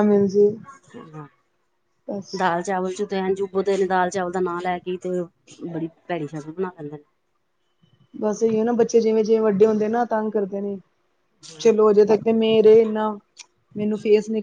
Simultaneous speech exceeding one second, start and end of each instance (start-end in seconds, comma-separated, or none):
none